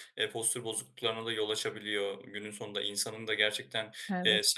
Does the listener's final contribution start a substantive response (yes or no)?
no